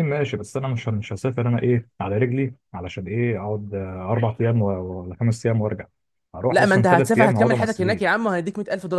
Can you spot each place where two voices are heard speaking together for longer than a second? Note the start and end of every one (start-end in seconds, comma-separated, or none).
6.5-8.2